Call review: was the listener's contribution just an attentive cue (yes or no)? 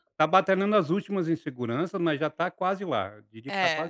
no